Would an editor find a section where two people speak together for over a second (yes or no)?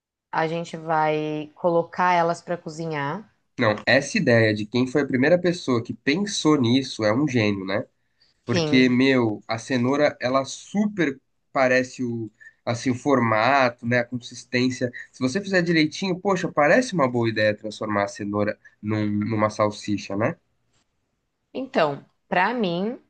no